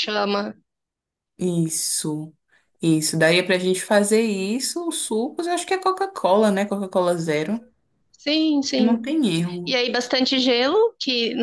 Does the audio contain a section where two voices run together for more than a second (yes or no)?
no